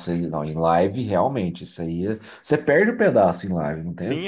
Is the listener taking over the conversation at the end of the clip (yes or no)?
yes